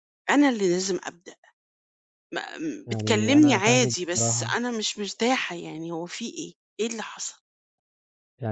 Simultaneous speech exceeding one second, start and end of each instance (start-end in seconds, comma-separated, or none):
2.9-4.6